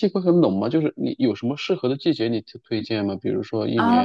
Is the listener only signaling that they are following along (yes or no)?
no